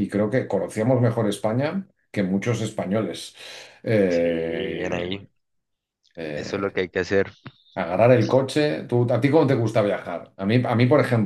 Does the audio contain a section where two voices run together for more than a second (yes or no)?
yes